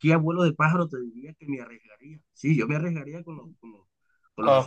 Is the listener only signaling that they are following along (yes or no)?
no